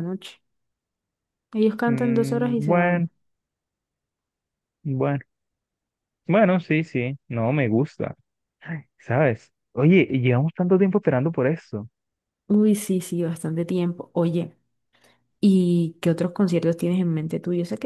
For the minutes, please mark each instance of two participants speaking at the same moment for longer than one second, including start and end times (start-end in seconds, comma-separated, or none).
1.9-3.1